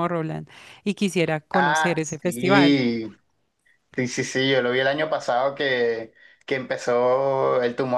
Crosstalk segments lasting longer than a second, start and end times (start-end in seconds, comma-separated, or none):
1.5-2.8